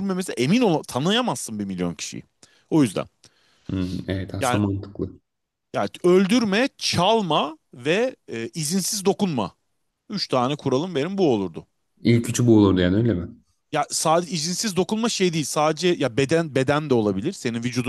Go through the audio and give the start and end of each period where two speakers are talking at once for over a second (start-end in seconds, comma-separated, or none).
none